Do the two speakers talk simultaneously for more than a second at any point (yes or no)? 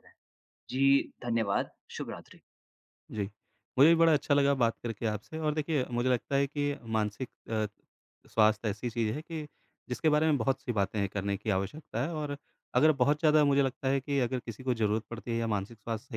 no